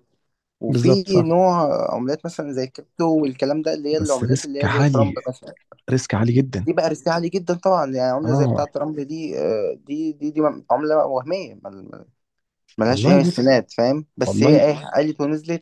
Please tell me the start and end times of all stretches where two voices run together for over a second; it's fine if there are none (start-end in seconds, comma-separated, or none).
4.0-5.2